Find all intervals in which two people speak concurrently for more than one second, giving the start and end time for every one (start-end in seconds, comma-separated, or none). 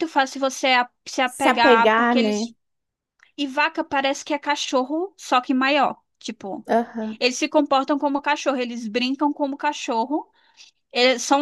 1.2-2.5